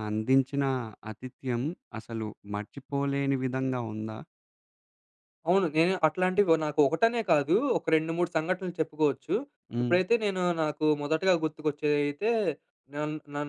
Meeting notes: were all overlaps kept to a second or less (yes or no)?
yes